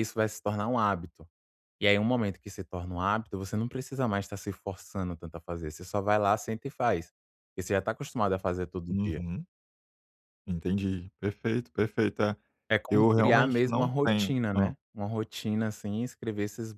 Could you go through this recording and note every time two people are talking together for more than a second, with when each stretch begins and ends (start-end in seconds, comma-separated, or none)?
12.9-14.7